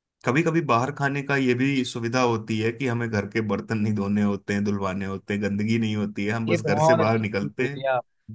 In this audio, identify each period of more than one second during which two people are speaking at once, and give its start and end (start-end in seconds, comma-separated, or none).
6.5-7.8